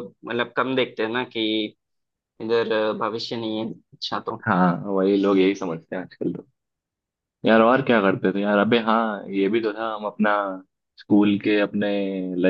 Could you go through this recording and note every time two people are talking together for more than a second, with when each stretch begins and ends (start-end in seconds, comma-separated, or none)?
none